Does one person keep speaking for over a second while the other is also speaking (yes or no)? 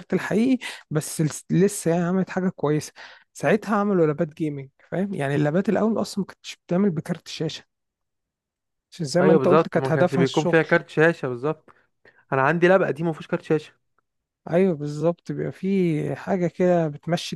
yes